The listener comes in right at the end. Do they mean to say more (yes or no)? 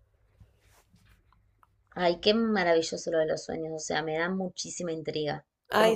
no